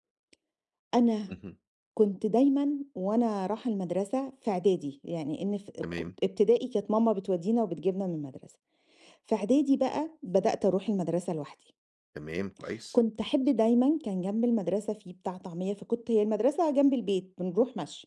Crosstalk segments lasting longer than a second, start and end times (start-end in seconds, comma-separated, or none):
none